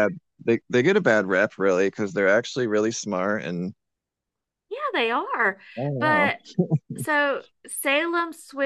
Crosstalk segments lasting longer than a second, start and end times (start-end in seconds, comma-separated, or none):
none